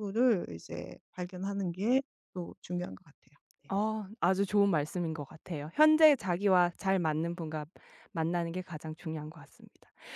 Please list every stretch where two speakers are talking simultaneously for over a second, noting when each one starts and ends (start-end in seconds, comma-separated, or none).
none